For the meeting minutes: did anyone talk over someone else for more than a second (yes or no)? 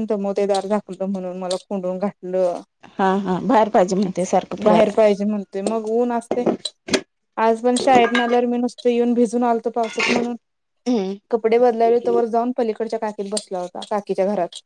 no